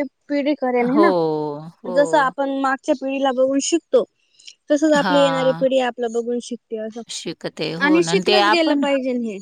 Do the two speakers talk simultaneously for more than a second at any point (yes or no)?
no